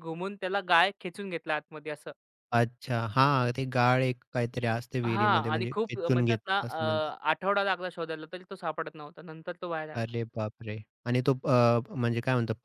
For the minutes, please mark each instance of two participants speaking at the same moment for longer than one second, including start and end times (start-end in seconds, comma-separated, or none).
5.0-6.8